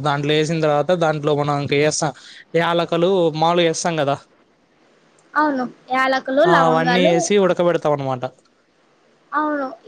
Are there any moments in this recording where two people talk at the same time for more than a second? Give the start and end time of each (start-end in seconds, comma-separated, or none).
none